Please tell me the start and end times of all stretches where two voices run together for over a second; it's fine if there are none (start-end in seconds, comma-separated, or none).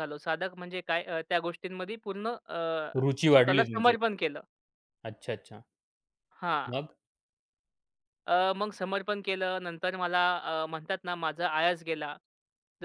none